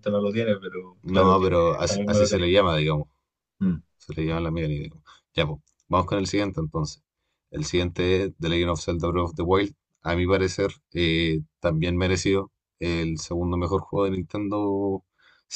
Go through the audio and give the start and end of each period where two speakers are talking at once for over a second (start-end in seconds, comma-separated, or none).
1.0-2.5